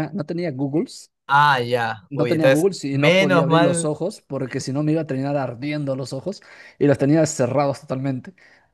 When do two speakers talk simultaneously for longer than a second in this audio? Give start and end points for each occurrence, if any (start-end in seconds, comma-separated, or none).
2.1-3.9